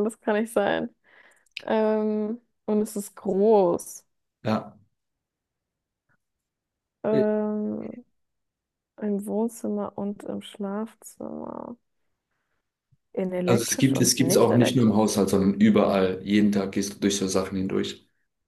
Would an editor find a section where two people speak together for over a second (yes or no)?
yes